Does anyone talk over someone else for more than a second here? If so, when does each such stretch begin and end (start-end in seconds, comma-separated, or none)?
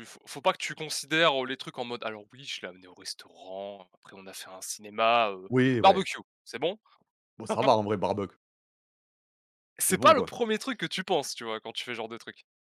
none